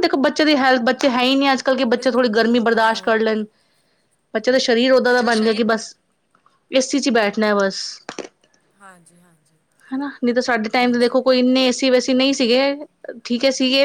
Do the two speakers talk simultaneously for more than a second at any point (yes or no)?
yes